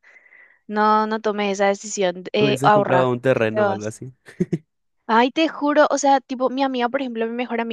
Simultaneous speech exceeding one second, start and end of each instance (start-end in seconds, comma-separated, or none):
2.4-3.9